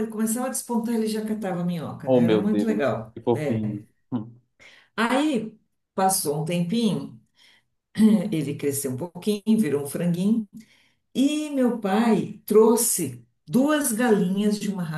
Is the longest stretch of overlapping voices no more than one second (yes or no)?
no